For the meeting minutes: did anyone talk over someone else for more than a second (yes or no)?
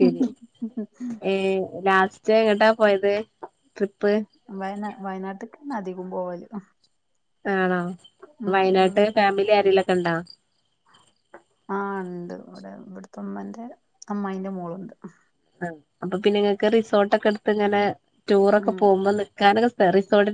no